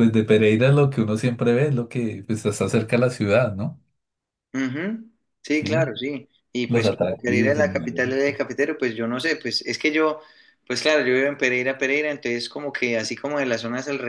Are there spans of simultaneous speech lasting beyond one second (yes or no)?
yes